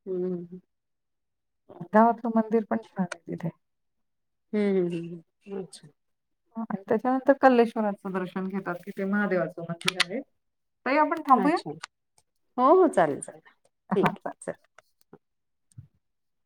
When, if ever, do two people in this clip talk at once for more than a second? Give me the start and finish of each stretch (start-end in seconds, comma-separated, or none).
none